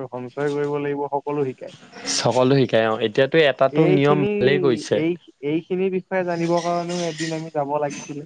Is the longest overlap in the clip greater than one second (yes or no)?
no